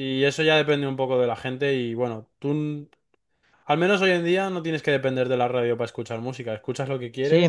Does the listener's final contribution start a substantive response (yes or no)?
yes